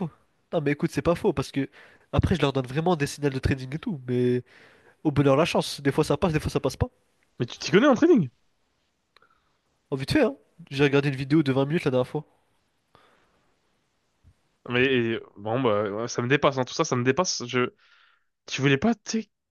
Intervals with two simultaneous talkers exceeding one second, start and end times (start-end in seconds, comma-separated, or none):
none